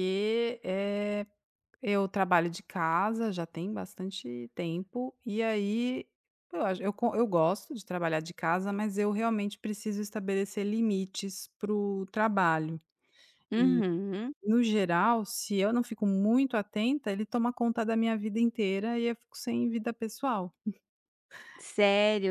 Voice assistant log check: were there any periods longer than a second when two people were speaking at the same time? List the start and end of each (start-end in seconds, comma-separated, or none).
none